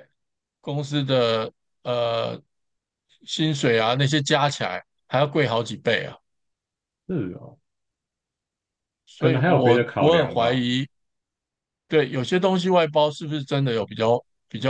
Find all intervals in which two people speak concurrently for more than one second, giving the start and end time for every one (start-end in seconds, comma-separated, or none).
9.2-10.6